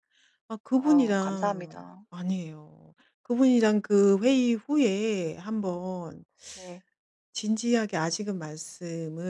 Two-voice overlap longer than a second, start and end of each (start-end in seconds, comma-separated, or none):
0.7-2.1